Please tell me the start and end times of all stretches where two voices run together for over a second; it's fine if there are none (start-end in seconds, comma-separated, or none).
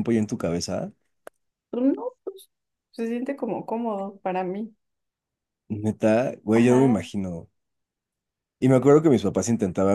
none